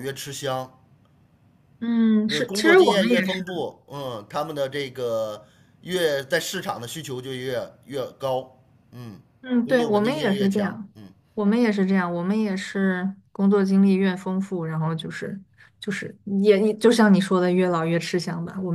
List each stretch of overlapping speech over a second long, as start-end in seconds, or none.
2.3-3.6, 9.6-10.9